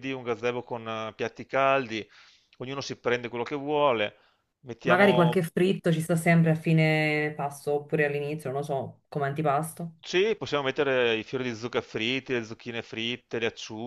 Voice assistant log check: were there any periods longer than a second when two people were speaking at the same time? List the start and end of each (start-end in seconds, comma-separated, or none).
none